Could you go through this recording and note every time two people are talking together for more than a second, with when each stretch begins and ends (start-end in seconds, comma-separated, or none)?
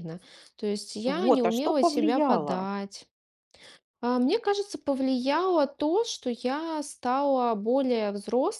1.1-2.7